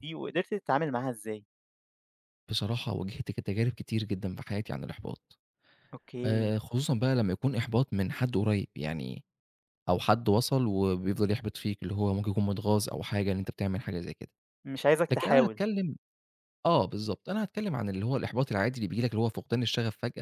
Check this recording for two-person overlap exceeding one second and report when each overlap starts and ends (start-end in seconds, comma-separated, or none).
none